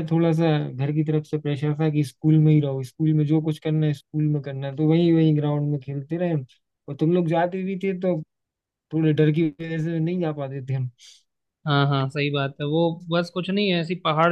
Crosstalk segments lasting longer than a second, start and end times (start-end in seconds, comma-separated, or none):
none